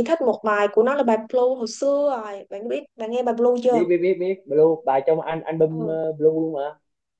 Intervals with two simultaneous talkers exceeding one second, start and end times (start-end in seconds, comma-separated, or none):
none